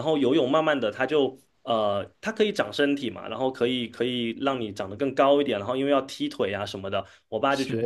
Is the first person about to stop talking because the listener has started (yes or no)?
no